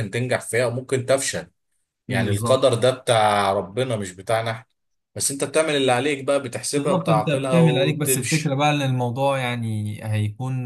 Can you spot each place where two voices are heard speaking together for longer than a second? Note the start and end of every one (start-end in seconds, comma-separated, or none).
6.7-8.5